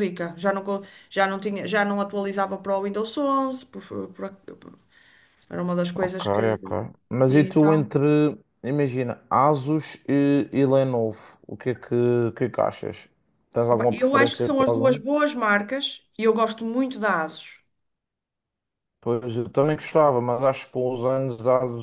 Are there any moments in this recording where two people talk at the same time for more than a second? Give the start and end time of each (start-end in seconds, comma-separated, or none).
13.7-15.0